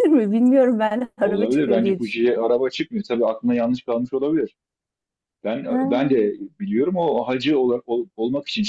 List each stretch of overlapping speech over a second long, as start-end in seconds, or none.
1.2-2.5